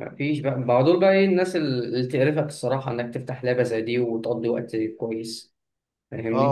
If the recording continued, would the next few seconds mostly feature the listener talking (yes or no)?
yes